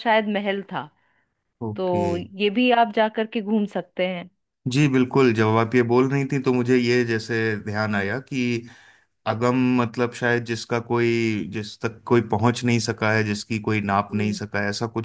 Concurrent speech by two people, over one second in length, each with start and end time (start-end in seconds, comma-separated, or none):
none